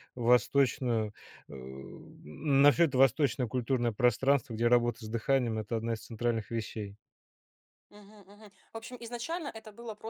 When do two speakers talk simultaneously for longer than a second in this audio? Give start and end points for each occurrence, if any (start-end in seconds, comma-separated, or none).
none